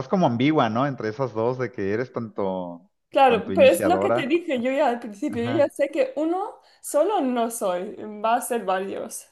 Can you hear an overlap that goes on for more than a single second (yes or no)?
yes